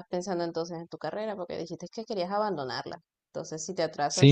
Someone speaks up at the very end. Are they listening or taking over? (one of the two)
taking over